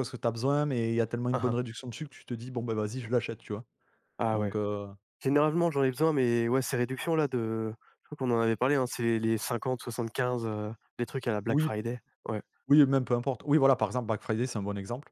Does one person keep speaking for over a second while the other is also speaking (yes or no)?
no